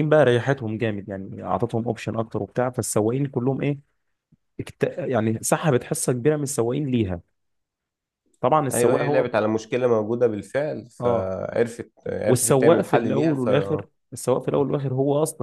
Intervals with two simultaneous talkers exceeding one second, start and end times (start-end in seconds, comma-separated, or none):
12.3-13.5